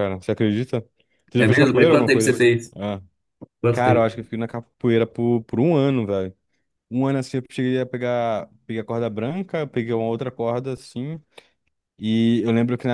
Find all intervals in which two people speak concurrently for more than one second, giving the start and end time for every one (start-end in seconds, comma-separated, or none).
1.4-2.7